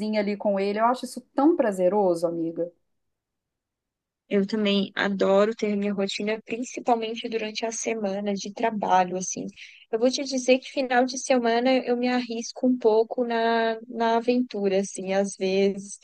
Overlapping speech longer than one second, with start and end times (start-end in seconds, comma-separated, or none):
none